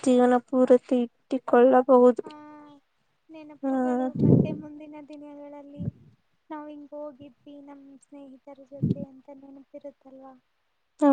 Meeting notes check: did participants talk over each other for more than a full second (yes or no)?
no